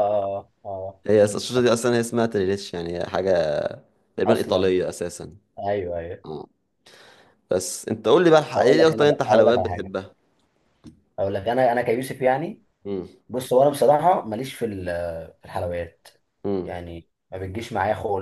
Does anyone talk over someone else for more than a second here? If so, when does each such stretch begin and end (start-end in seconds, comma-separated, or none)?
8.5-9.9